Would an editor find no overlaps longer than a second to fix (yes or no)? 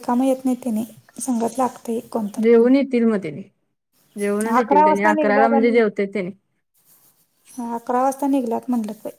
no